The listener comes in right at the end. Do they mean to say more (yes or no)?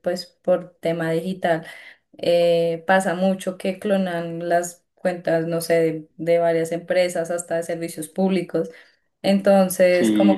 no